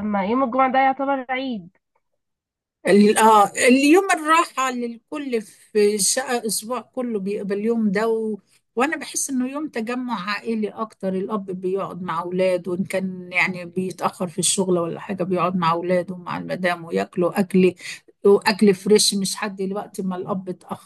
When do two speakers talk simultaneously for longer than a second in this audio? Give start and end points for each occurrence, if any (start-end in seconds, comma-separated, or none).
none